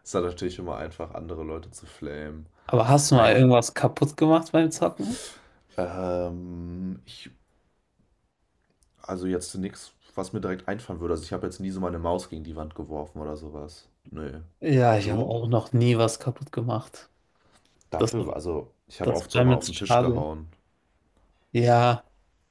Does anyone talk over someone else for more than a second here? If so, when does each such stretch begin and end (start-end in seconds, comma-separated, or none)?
19.0-20.3